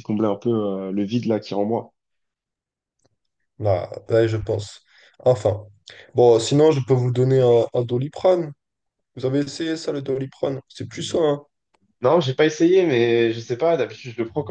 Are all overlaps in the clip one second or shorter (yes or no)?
yes